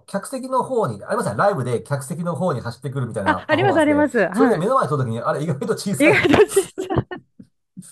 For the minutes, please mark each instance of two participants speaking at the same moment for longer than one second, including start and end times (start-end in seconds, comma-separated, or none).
3.3-4.7